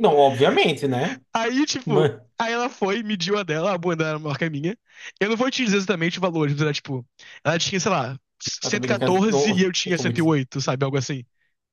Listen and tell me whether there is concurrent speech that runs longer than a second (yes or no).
yes